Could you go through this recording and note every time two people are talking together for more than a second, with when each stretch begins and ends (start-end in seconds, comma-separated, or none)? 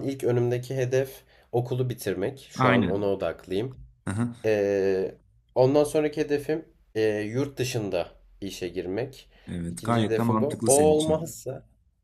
9.7-11.3